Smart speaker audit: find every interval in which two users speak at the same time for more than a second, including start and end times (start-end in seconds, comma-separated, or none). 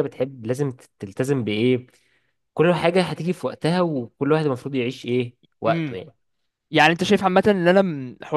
none